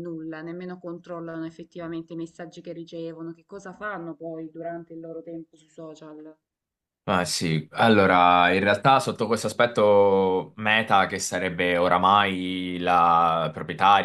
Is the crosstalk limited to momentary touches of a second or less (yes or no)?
yes